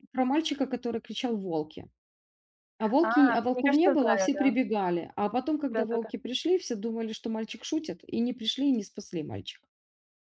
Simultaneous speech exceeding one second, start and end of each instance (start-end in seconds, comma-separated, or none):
3.0-4.5